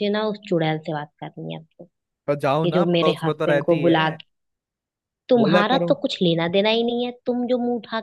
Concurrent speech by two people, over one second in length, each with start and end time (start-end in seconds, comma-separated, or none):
2.7-4.2